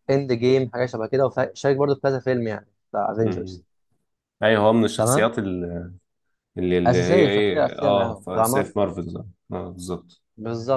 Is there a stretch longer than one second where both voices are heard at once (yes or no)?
yes